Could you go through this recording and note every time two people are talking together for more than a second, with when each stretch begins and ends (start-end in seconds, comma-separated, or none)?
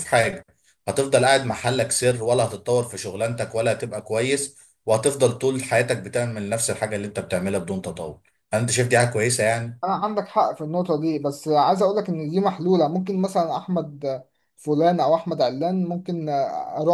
none